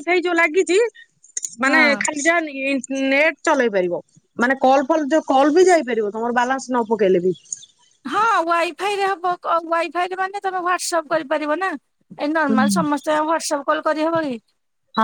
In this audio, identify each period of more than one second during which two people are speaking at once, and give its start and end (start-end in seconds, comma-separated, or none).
none